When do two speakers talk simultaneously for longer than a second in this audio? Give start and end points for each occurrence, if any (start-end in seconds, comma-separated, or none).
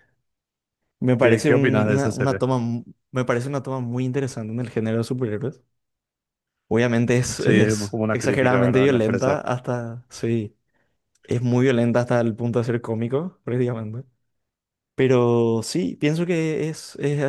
1.2-2.4, 7.4-9.4